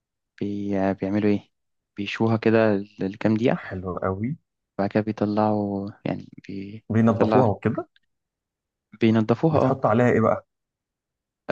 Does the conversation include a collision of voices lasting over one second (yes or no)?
no